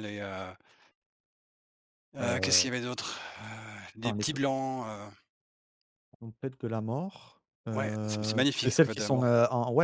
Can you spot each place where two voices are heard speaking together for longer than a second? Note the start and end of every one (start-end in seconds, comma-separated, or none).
7.7-9.3